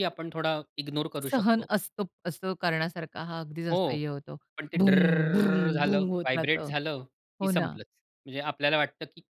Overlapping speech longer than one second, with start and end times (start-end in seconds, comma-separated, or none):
4.8-6.7